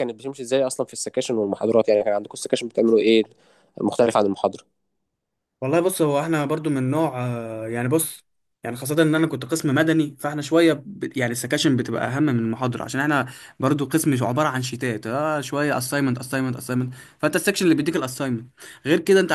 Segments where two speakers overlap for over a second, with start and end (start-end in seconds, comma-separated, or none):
none